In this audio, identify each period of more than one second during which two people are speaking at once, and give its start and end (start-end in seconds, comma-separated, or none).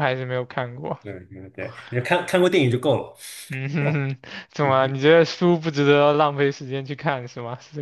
none